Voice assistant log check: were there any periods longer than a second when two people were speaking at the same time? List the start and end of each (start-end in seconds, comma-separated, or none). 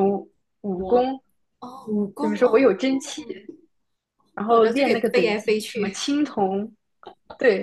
4.5-6.0